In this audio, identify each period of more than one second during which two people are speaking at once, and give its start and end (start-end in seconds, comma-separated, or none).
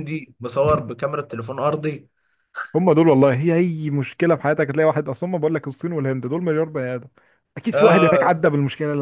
none